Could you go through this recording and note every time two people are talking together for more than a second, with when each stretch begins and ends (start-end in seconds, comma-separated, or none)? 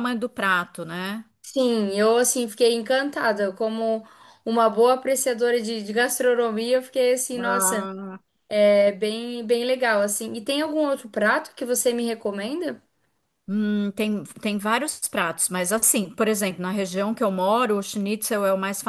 none